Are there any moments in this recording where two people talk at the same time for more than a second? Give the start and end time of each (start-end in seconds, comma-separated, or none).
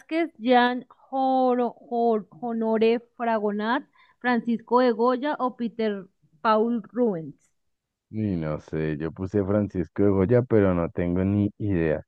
none